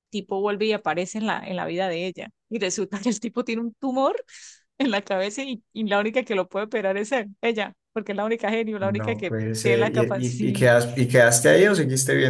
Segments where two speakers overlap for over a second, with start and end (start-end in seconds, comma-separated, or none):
8.8-10.7